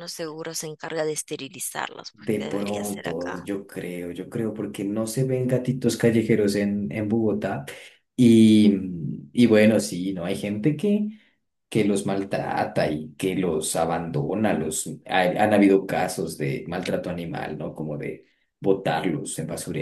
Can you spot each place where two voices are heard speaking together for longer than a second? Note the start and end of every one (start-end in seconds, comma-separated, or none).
2.1-3.5